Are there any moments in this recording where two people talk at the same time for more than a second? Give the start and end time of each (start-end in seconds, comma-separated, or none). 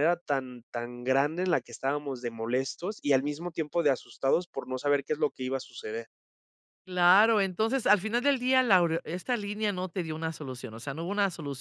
none